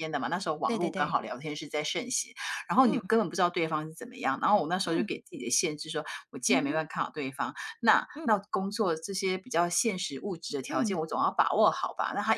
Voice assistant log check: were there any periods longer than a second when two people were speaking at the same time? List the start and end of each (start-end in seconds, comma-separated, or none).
none